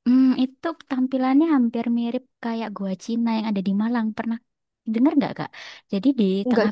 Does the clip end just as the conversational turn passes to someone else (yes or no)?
no